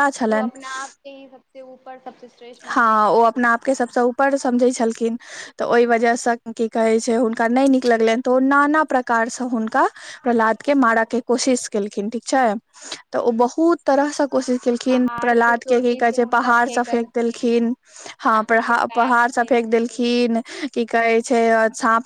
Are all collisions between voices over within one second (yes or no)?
no